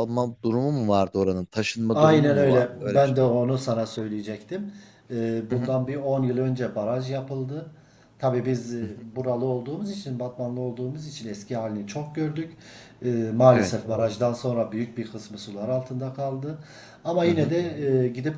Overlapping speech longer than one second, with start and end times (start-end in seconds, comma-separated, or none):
1.9-3.2